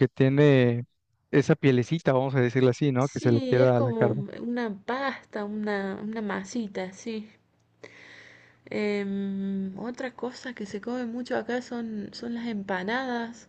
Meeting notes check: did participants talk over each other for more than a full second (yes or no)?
yes